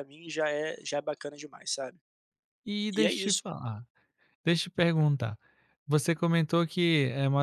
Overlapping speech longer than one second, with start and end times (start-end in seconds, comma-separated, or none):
none